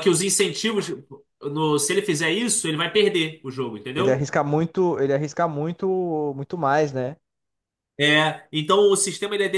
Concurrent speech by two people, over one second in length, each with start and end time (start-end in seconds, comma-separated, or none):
none